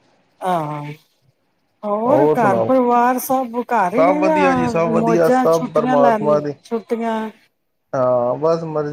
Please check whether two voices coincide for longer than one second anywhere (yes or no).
yes